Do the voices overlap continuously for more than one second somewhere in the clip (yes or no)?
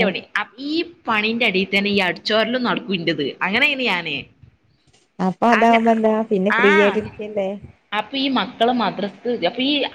no